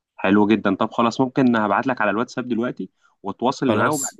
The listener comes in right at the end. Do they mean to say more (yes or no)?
no